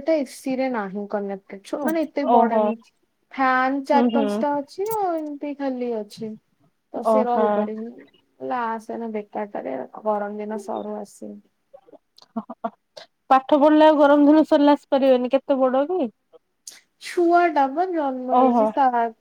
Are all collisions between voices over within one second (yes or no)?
yes